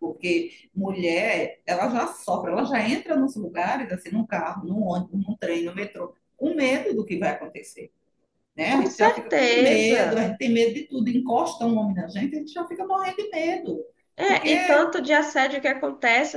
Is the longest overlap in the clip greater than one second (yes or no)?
yes